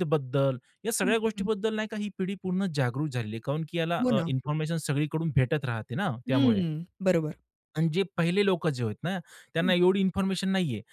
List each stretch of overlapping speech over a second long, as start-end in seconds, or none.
none